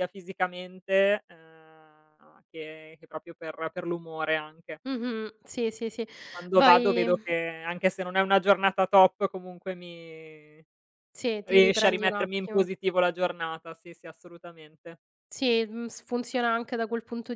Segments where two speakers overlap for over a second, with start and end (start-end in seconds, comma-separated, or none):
11.4-12.7